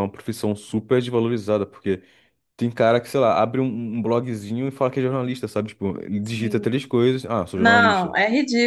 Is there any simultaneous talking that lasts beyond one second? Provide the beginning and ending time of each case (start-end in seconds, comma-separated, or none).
none